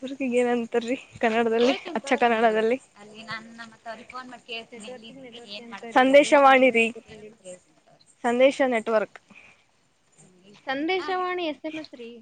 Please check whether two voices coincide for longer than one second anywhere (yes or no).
yes